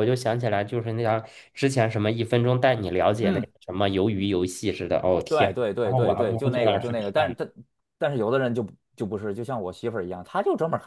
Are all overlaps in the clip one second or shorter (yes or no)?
no